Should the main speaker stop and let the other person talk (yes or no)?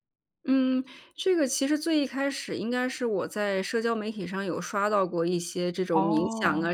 no